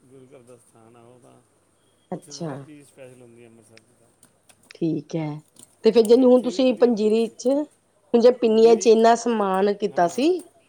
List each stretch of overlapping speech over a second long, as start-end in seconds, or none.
6.1-7.3